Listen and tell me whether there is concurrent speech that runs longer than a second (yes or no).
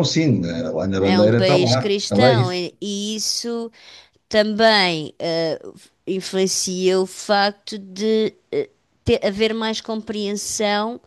yes